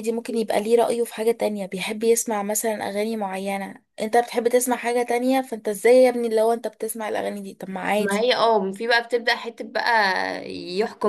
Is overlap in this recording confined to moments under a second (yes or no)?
yes